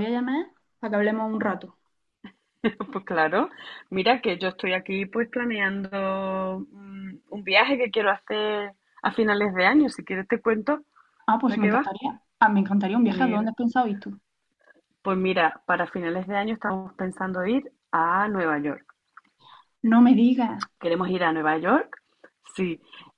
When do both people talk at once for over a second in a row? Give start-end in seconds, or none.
none